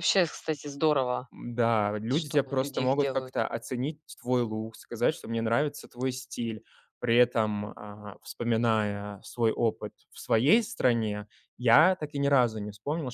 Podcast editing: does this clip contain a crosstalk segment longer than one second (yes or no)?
yes